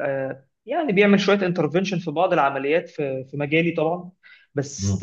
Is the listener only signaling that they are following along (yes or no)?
yes